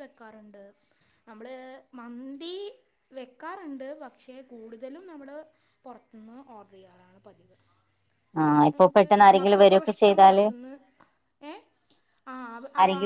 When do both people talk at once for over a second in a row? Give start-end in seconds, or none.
8.7-10.4